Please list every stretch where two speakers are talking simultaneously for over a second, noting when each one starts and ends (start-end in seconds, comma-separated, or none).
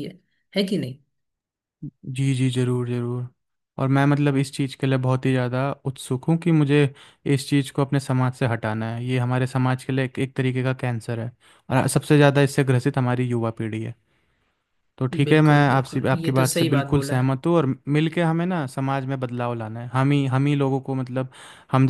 15.1-17.3